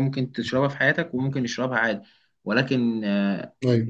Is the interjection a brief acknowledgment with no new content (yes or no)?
yes